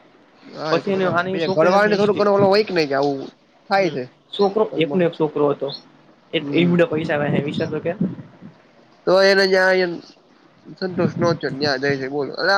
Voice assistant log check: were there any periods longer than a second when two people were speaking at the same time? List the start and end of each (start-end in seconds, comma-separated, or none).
0.7-2.3